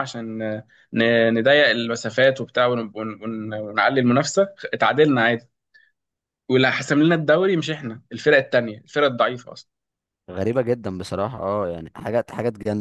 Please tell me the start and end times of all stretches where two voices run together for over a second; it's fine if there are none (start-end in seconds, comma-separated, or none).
none